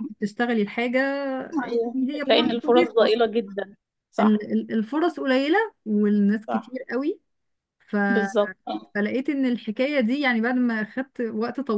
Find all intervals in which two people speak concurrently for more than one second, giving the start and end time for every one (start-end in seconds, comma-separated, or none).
1.6-3.2